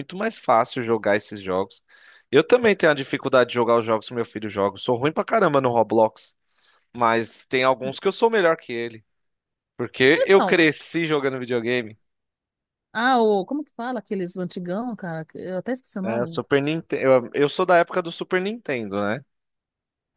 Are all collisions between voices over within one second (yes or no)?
yes